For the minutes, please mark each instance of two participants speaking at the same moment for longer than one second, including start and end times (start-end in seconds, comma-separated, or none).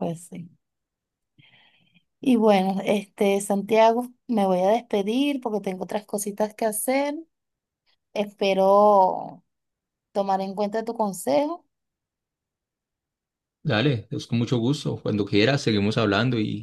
none